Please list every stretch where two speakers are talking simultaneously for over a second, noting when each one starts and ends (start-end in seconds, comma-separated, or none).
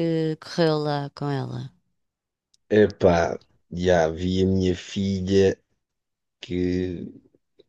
none